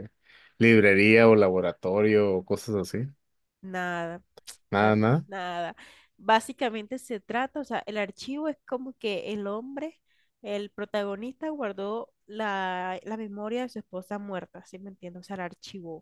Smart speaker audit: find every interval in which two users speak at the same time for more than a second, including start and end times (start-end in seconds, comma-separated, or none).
none